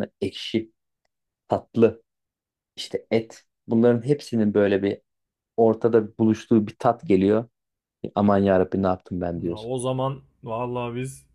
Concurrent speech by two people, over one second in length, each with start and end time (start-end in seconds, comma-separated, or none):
none